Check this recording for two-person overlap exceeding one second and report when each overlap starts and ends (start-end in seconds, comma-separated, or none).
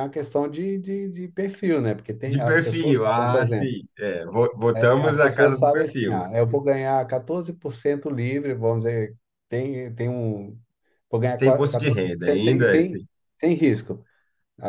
2.3-3.7, 4.7-6.2, 11.4-13.1